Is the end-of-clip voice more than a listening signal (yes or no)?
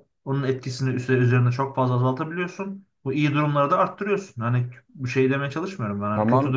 no